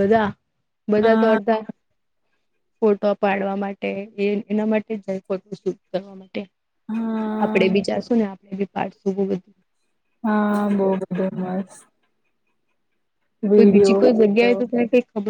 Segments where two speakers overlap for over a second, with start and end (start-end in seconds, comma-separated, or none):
none